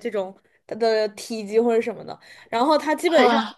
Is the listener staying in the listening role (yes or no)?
yes